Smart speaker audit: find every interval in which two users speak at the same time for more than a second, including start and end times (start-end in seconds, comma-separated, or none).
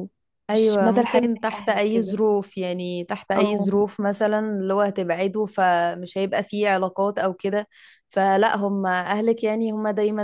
0.5-2.2